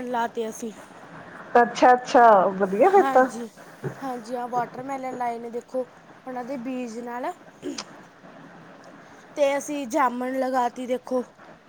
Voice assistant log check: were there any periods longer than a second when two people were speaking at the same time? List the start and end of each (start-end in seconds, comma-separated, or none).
none